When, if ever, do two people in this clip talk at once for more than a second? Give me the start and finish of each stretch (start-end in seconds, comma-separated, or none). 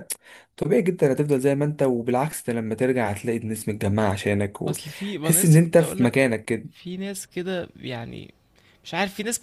4.7-6.1